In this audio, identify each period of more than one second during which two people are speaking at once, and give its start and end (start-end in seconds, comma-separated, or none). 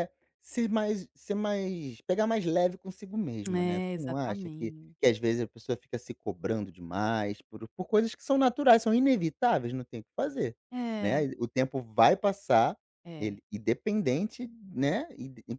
3.5-5.1